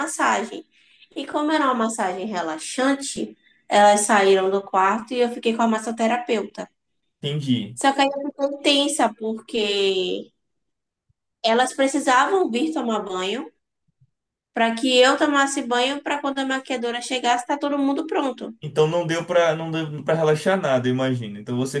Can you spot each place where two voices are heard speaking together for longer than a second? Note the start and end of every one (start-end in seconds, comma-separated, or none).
none